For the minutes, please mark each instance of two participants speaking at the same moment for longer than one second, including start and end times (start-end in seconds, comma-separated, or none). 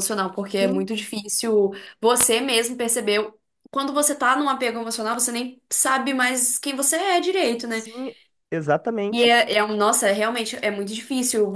none